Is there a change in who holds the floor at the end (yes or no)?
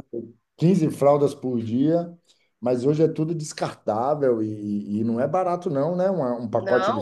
yes